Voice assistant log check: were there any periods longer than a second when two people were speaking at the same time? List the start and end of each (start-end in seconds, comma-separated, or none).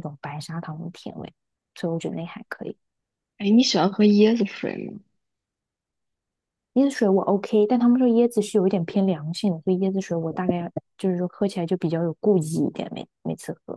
none